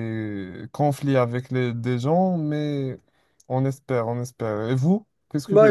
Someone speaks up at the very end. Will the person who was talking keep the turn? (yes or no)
no